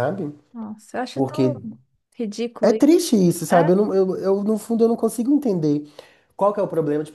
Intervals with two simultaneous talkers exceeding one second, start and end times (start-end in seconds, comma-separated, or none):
none